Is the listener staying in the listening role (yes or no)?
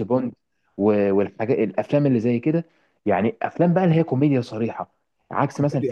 yes